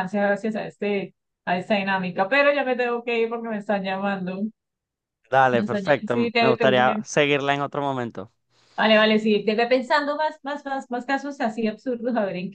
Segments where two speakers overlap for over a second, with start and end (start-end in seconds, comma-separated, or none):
5.5-7.0